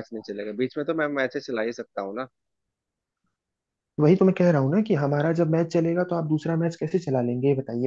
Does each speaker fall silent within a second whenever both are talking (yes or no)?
yes